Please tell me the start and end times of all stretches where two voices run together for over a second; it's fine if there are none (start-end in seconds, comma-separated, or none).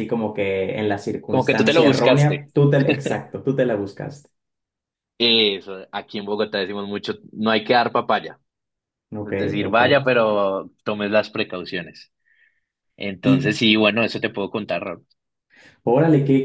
1.3-2.5